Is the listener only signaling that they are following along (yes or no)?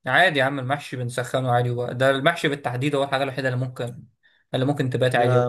no